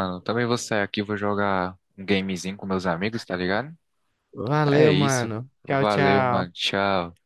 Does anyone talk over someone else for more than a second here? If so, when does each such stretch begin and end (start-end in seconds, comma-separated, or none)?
4.7-6.6